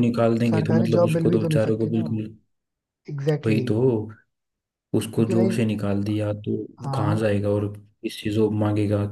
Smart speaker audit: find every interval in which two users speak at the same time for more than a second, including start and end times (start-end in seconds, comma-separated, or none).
0.5-2.0